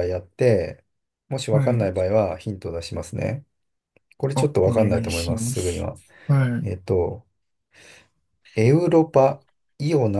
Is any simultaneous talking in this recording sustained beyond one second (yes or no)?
yes